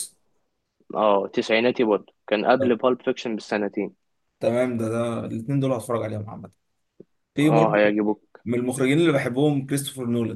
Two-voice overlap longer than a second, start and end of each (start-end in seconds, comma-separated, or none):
none